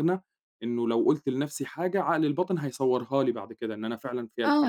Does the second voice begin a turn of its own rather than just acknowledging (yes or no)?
yes